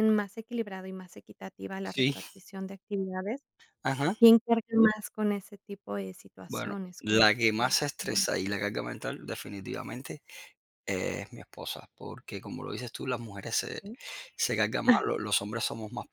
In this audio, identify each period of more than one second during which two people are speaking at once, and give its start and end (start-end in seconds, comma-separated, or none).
6.5-8.3